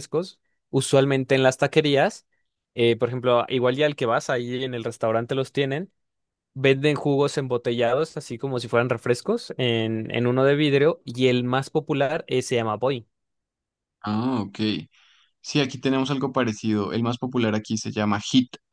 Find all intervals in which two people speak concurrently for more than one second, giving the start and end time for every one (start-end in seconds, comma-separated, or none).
none